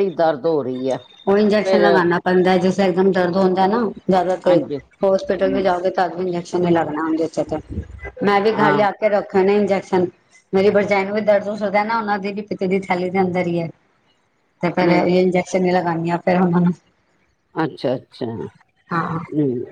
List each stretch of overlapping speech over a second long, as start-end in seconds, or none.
none